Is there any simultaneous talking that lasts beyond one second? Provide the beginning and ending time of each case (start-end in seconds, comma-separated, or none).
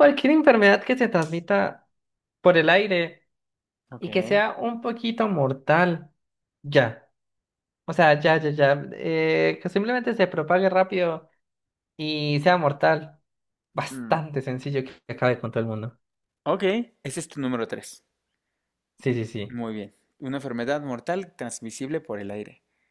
none